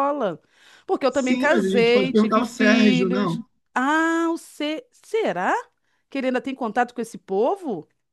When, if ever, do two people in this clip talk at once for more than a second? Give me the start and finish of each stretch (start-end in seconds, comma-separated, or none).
1.1-3.5